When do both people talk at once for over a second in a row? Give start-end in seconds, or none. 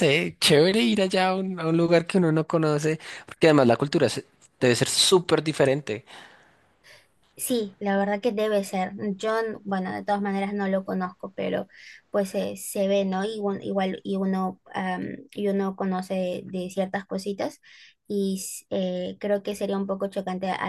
none